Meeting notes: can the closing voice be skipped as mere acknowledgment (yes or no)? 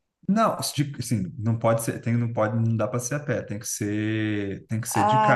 no